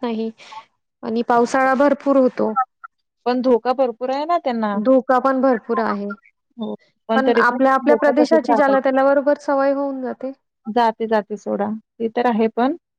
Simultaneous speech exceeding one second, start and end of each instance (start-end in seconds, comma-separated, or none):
7.1-9.0